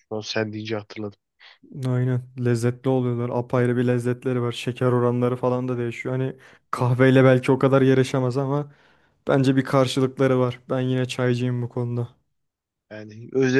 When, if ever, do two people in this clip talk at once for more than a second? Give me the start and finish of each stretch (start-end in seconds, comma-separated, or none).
none